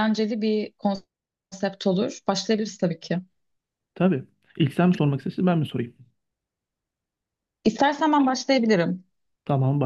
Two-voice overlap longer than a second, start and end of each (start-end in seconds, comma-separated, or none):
none